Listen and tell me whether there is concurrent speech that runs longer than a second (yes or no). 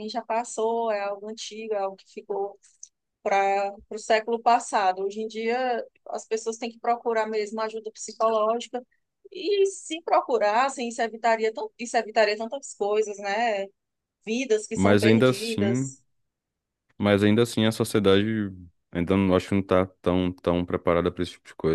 yes